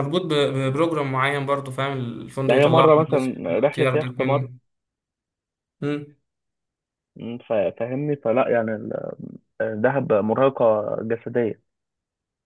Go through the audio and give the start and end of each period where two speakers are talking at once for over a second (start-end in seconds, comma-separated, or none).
2.5-4.5